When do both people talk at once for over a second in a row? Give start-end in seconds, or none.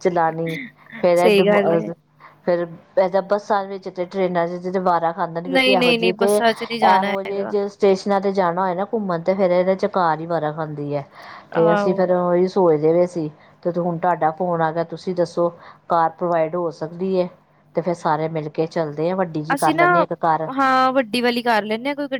5.5-7.5